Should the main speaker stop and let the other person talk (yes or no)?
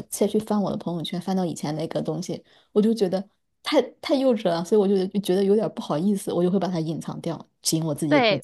yes